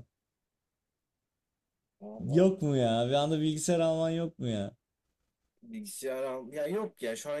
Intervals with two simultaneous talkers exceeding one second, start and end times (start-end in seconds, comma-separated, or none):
none